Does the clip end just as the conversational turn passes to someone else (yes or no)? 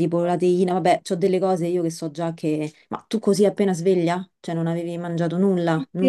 yes